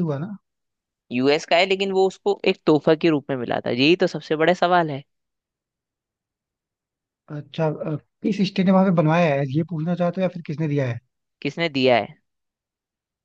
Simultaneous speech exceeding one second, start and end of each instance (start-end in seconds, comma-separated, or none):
none